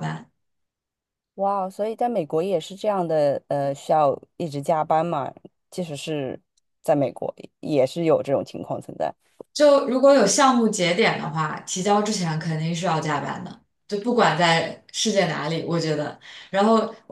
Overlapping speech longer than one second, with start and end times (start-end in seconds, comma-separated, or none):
none